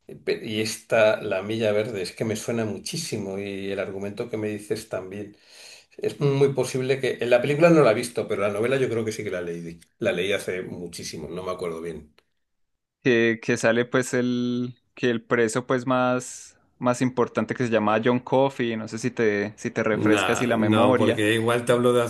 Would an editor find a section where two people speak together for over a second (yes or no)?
yes